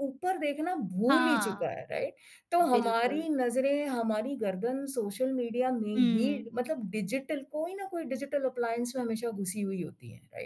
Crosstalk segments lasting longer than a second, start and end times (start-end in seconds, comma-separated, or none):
none